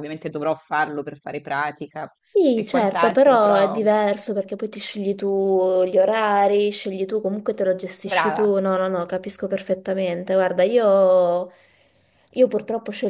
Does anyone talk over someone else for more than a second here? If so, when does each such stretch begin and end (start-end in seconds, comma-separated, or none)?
2.5-3.8